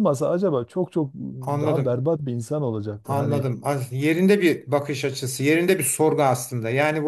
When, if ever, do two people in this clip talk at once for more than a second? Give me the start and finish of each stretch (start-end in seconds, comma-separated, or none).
none